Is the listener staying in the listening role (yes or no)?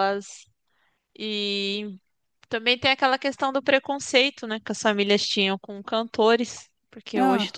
yes